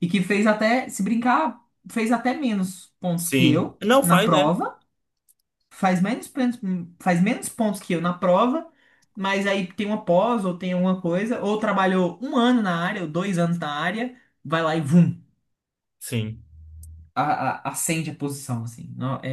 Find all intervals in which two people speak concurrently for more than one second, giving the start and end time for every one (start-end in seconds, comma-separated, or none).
3.2-4.5